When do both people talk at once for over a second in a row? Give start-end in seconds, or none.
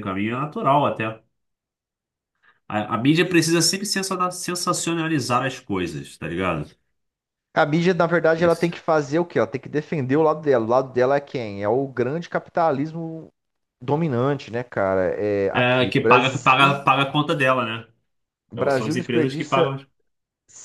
15.5-16.8, 18.5-19.8